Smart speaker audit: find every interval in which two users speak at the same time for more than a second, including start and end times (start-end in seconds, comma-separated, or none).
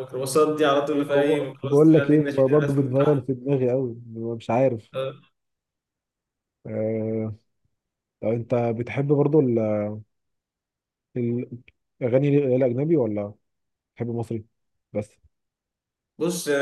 0.9-3.3